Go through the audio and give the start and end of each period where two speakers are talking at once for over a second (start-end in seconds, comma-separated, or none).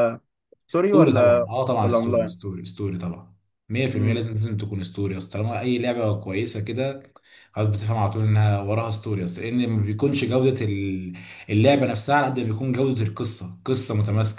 0.7-2.3